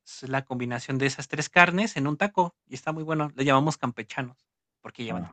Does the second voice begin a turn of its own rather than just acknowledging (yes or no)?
yes